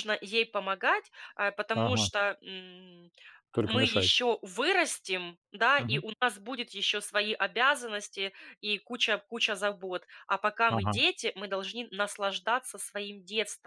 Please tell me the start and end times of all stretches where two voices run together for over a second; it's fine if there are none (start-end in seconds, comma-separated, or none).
none